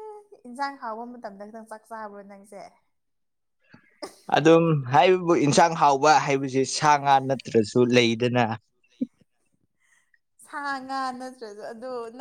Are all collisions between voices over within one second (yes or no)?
yes